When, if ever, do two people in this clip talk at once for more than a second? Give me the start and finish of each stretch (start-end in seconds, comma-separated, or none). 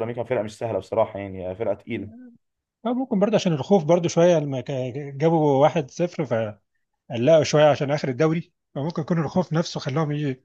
none